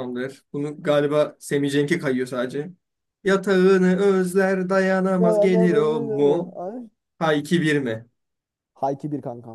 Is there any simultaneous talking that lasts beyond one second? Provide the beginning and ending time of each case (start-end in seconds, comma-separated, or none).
5.2-6.5